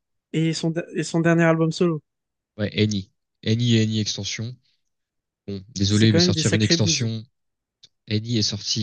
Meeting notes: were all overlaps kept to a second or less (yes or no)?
no